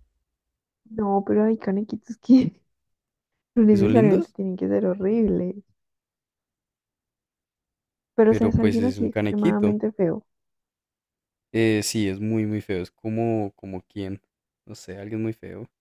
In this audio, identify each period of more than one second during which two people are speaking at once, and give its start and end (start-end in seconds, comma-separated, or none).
8.3-9.8